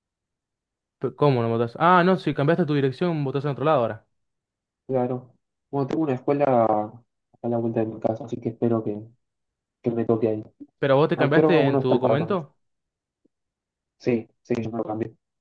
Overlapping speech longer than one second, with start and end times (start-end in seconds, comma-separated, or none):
11.2-12.4